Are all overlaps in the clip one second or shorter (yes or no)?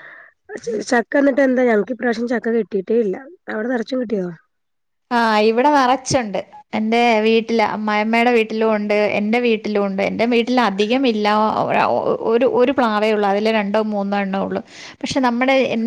yes